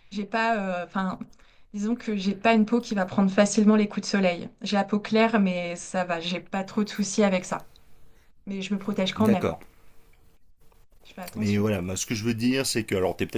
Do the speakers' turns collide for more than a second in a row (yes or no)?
no